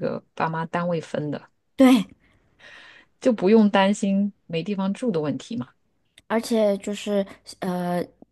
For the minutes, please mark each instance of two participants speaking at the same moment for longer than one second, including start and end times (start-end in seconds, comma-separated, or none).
none